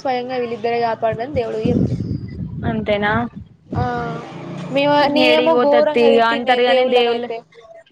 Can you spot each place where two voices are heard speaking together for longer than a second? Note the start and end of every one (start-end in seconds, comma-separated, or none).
5.3-7.3